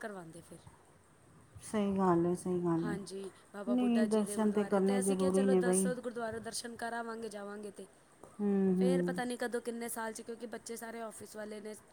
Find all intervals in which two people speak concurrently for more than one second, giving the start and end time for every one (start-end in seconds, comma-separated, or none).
4.5-5.9